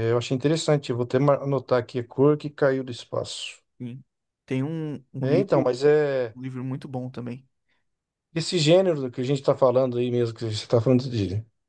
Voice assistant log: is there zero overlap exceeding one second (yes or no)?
yes